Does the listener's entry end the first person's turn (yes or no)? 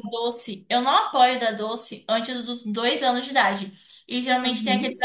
no